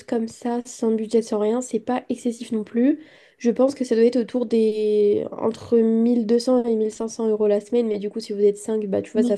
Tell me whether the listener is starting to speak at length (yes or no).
no